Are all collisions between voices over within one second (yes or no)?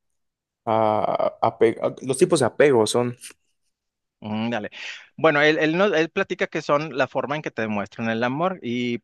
yes